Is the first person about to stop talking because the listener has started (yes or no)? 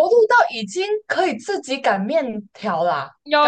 yes